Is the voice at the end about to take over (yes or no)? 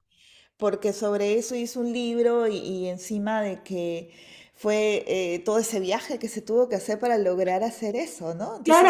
yes